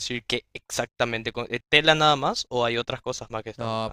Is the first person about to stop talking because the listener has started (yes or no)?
yes